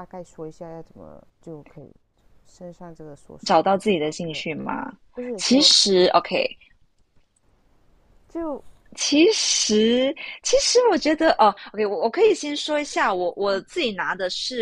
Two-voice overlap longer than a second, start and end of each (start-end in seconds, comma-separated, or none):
none